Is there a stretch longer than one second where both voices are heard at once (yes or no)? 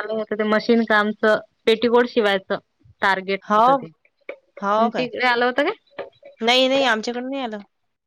no